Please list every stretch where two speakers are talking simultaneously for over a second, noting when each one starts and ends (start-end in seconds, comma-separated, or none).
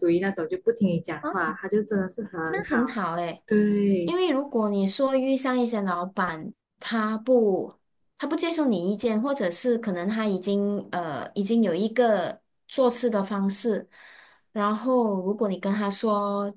none